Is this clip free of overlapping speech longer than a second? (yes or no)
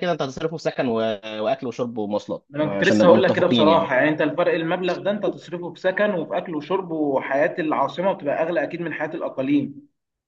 no